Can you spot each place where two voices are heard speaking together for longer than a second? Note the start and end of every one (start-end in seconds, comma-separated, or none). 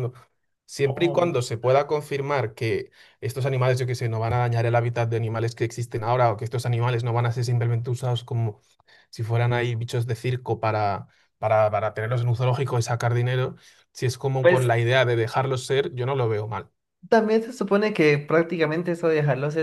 none